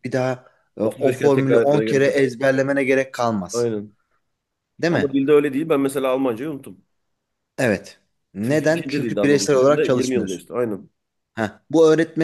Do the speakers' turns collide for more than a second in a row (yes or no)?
yes